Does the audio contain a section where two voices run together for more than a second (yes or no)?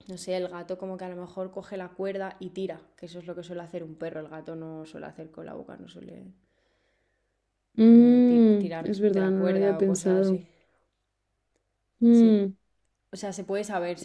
yes